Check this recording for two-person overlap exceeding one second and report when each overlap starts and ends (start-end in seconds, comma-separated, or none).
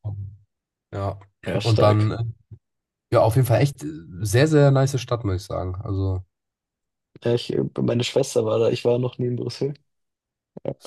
none